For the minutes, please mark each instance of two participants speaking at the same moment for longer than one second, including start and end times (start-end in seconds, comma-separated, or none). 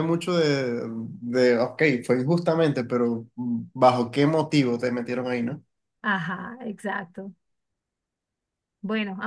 none